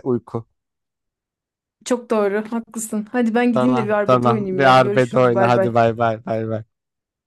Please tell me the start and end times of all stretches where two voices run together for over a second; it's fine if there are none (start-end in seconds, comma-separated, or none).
3.5-5.8